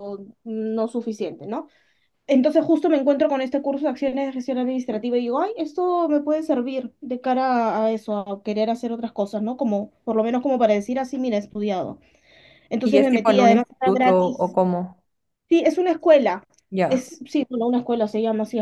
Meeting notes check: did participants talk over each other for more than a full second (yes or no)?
yes